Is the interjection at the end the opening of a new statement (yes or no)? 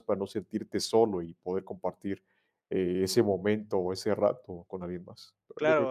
yes